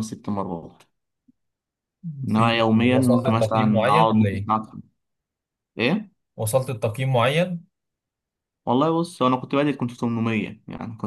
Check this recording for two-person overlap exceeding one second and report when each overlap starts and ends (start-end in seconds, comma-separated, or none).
2.3-4.5